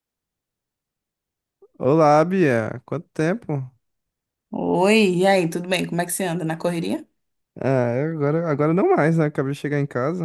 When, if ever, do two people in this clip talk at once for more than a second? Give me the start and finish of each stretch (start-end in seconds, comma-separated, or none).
none